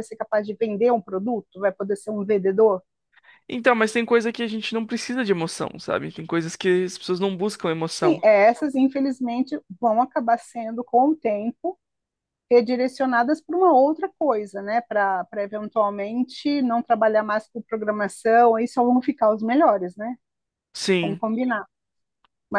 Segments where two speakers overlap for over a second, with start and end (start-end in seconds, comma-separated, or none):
none